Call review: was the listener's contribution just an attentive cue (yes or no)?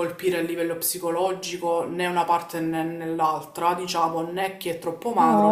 no